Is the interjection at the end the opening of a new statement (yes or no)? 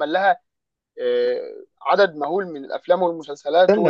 yes